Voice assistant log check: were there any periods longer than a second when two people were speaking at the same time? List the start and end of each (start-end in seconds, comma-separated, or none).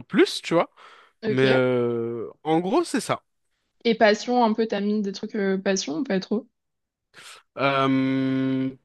none